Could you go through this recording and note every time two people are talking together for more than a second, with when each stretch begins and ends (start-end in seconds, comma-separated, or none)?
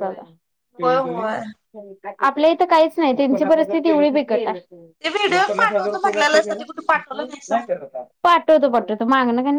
5.3-7.6